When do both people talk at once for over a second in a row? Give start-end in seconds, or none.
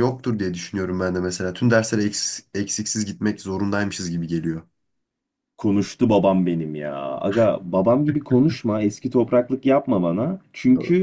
none